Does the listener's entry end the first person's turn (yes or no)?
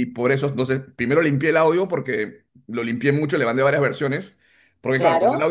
no